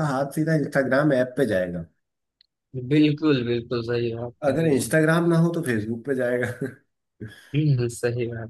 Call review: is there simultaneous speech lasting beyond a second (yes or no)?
no